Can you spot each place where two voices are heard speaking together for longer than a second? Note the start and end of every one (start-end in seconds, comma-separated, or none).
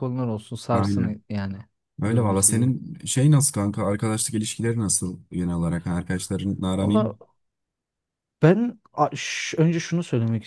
none